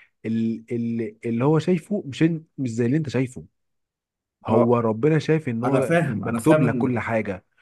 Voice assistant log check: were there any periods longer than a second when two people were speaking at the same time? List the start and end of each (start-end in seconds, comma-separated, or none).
5.6-7.1